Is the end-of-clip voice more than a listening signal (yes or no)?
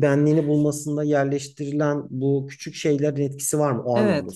yes